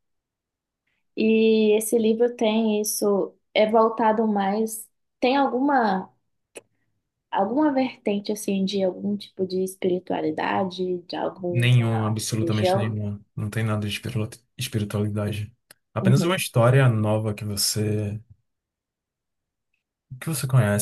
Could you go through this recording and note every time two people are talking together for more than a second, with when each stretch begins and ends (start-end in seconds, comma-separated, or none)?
11.5-13.0